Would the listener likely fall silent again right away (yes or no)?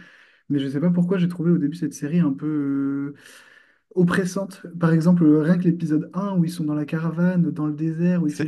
yes